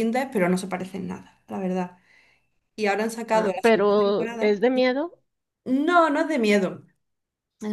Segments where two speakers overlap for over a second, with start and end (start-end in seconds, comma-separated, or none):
3.3-4.6